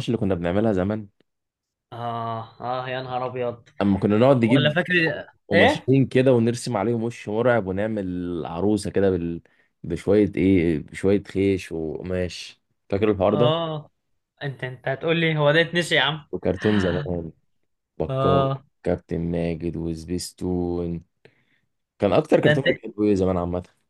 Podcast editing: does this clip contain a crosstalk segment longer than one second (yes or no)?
no